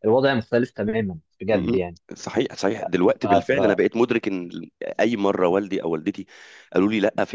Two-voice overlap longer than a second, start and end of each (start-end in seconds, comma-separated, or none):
none